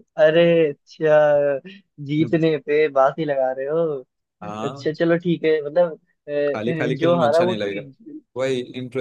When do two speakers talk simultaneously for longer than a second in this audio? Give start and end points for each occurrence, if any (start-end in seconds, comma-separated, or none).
6.5-7.8